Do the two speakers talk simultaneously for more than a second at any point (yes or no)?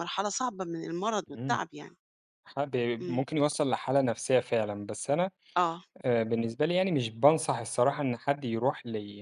no